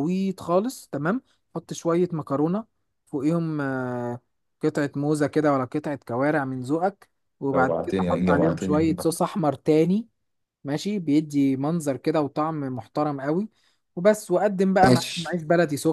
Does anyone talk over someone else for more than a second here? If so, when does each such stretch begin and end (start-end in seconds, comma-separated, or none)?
7.5-9.2